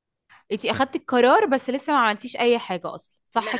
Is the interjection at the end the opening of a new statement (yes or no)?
yes